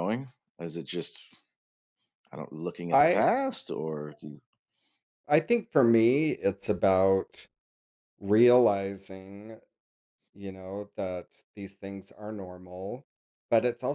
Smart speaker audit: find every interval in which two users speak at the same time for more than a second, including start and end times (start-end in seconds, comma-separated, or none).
none